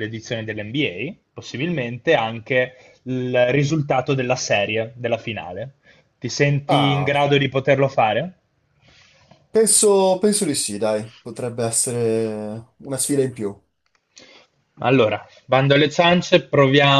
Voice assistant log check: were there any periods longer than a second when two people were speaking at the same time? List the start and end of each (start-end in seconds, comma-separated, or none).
none